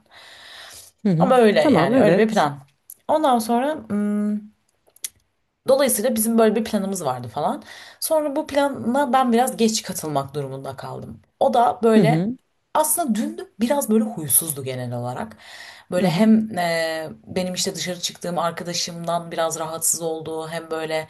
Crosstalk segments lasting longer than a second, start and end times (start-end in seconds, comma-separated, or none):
1.2-2.5